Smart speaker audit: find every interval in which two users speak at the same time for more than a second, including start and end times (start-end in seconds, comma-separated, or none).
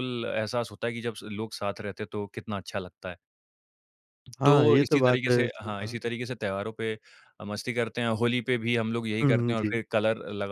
4.4-6.0